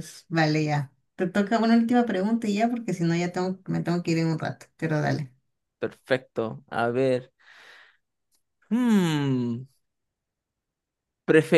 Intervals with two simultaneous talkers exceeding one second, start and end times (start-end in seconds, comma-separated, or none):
none